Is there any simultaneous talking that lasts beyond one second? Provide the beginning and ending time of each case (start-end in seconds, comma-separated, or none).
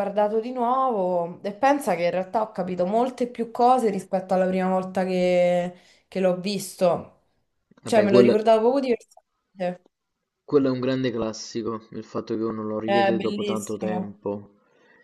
12.8-14.2